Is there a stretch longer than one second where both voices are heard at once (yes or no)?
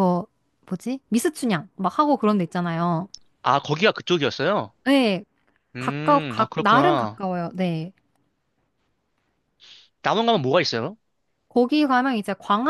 yes